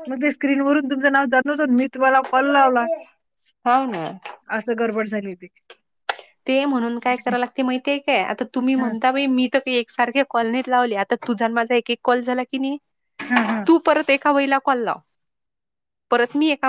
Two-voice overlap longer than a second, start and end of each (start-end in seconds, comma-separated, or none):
none